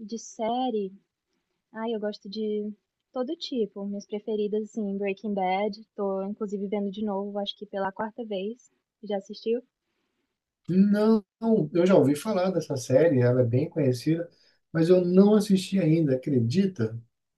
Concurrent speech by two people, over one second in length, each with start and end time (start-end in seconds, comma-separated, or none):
none